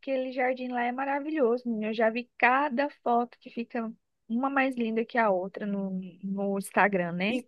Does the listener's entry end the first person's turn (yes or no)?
yes